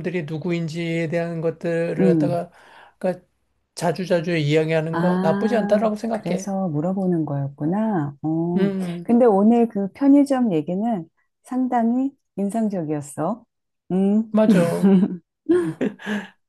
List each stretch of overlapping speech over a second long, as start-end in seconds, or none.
4.9-6.5